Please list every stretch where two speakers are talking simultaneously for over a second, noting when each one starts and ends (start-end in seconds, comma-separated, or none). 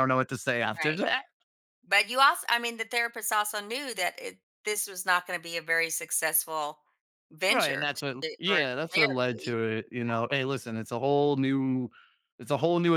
7.5-9.6